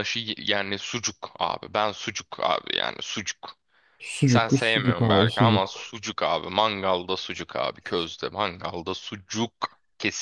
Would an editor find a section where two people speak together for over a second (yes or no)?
yes